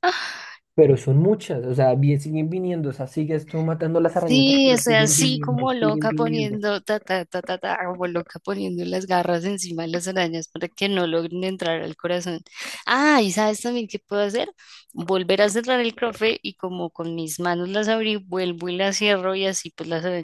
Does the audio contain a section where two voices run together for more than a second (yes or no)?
yes